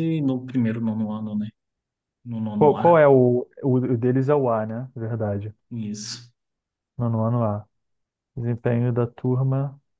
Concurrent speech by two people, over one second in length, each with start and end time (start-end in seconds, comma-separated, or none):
none